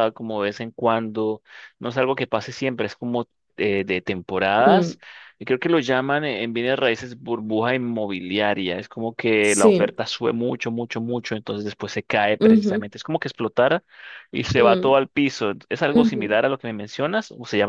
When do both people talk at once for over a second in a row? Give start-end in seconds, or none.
none